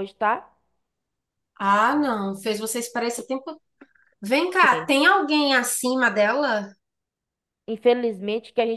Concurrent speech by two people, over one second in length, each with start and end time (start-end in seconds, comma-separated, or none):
none